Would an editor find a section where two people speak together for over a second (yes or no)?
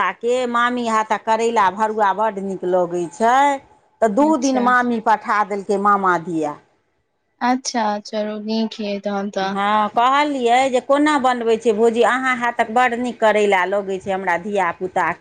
no